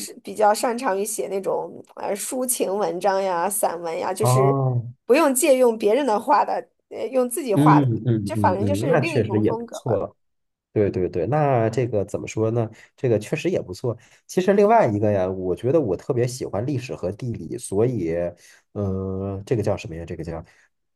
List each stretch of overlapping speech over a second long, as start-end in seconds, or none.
7.5-10.0